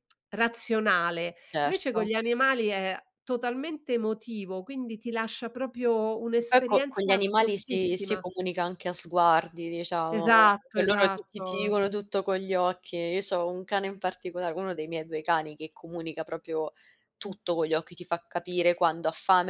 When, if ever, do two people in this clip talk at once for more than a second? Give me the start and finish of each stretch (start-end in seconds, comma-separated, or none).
6.3-8.2, 10.2-11.5